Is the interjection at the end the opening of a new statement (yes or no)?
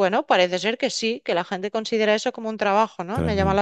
yes